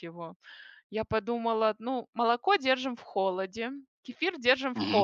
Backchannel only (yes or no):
yes